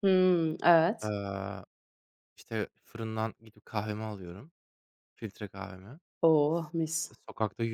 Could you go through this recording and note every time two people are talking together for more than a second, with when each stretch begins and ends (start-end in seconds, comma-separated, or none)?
none